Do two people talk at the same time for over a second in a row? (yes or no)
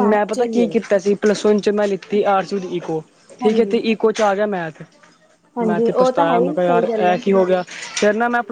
yes